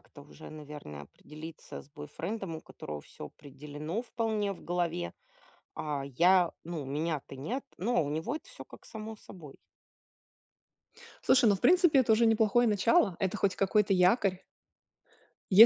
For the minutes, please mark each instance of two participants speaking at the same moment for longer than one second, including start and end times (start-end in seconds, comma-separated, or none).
none